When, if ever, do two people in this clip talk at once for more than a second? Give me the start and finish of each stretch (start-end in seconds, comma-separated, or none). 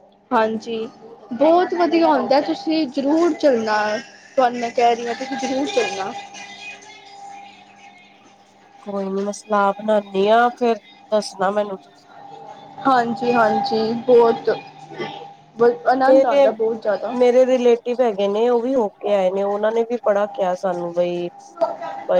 none